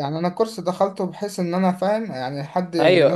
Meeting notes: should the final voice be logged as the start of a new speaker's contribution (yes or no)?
yes